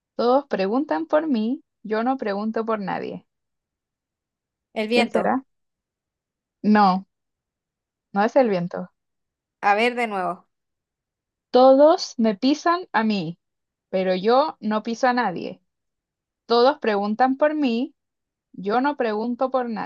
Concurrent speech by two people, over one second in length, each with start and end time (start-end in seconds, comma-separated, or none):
none